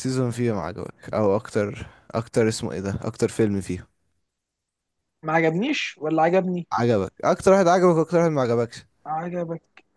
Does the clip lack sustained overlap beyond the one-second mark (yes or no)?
yes